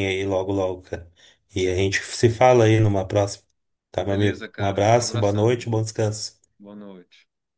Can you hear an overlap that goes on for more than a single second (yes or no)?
yes